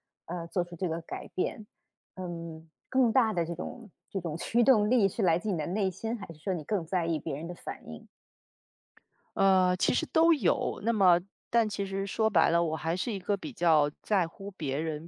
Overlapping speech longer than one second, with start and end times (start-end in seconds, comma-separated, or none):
none